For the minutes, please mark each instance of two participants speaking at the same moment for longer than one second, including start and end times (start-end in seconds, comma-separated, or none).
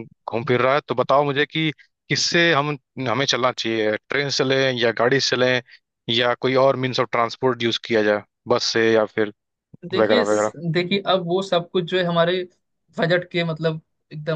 none